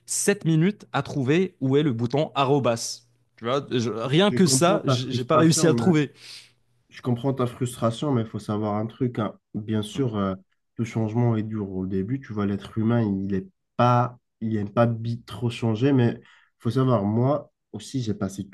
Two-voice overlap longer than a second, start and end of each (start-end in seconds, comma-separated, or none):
4.3-5.9